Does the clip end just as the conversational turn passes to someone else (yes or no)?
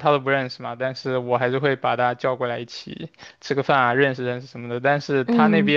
no